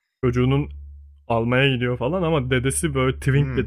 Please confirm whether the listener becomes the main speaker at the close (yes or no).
yes